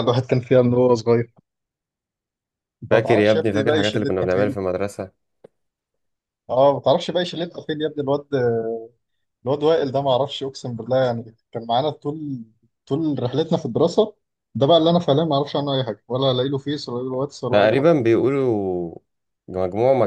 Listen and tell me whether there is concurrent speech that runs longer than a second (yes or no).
yes